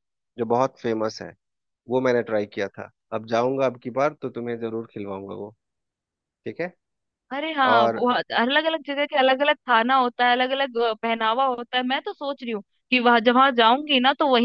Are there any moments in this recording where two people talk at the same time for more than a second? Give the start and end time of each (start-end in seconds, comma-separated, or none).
none